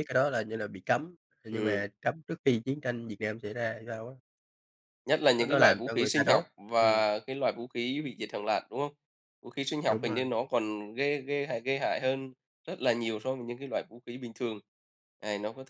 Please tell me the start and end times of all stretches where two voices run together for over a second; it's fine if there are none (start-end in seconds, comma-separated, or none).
5.4-7.1